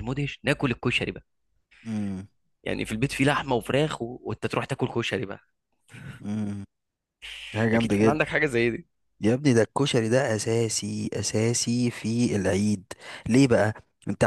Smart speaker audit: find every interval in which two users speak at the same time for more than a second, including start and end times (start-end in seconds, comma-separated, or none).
none